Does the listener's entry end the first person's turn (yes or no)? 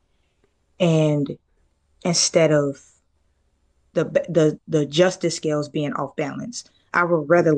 no